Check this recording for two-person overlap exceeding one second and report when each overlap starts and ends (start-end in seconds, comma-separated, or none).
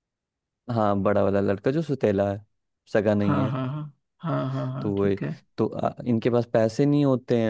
none